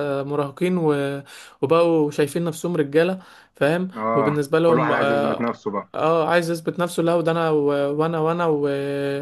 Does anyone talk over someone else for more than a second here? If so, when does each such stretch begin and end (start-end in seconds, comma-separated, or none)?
4.0-5.6